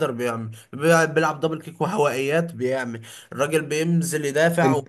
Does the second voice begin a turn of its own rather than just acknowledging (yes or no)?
no